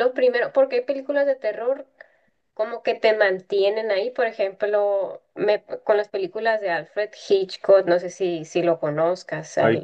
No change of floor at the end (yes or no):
no